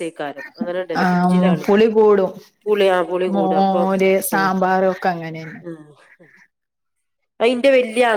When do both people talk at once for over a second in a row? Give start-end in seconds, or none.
none